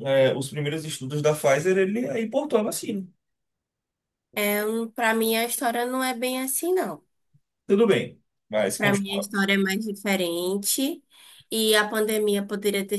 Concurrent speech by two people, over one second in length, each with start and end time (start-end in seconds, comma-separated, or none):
none